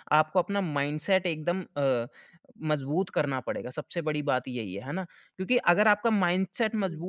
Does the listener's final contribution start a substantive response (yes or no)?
no